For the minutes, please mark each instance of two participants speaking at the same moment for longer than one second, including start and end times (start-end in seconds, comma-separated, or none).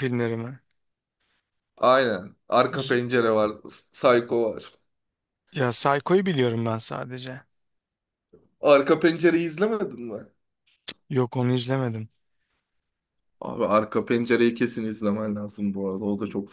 none